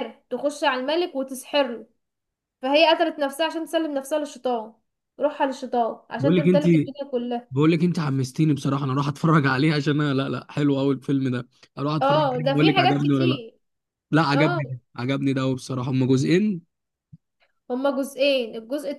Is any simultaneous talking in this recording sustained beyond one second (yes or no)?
yes